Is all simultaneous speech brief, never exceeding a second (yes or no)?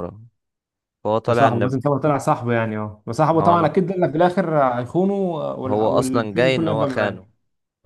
no